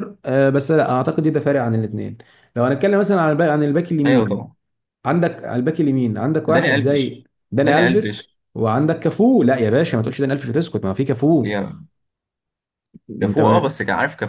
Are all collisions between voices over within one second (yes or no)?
no